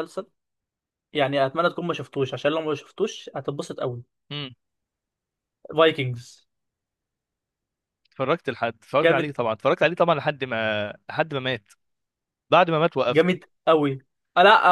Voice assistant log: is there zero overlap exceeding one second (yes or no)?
yes